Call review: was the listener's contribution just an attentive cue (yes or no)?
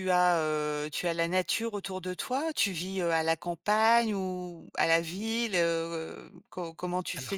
yes